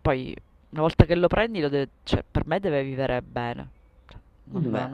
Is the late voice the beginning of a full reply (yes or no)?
no